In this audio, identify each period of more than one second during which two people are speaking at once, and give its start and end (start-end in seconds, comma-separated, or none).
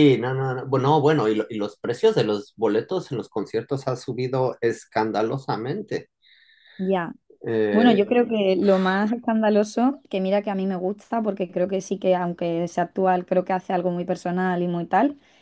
none